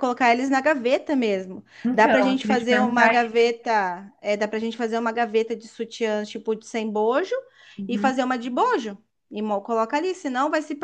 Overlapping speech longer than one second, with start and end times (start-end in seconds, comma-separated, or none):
1.8-3.5